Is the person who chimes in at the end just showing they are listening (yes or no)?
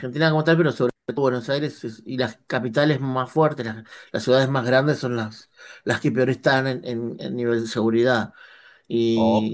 yes